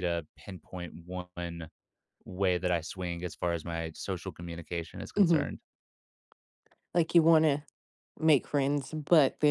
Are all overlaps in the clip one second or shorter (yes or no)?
yes